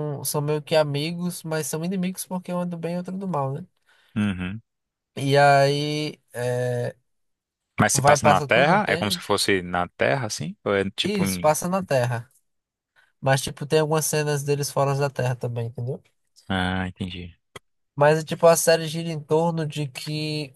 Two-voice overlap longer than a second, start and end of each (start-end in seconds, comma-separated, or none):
7.9-9.2